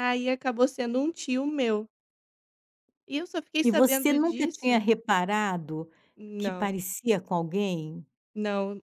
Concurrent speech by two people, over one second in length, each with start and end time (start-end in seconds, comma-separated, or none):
3.6-4.8